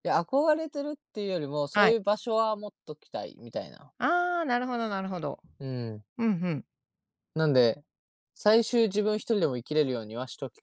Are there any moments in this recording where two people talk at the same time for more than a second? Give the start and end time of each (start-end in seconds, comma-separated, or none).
none